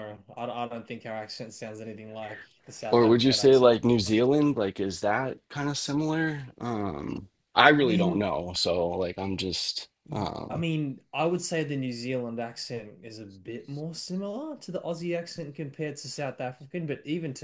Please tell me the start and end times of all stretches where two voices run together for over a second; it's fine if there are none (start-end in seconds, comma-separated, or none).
2.9-4.3